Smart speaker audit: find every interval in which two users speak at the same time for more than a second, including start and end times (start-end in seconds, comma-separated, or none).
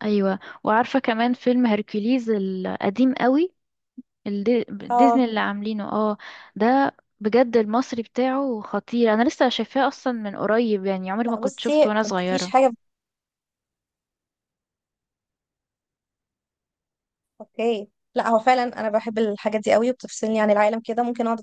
11.2-12.5